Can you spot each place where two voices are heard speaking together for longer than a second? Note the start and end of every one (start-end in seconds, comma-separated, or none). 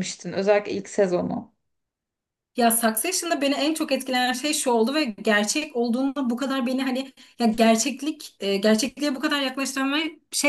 none